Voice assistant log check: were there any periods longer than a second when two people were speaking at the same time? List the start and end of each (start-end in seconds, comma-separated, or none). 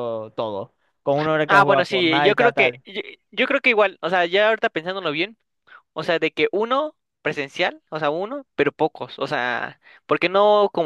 1.5-2.8